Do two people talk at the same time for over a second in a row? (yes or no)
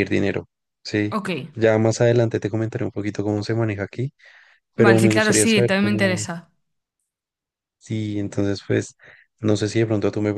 yes